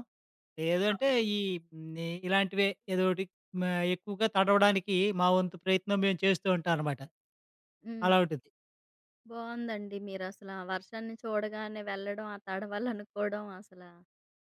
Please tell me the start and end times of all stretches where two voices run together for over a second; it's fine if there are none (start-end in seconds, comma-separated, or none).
none